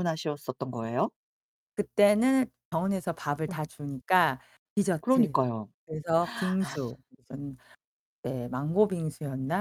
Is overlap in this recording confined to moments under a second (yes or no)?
yes